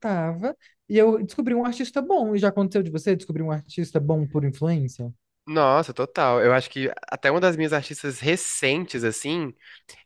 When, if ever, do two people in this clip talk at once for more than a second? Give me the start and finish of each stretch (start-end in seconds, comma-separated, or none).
none